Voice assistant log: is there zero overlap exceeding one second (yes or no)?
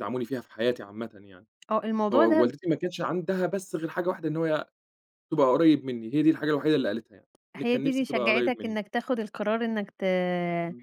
no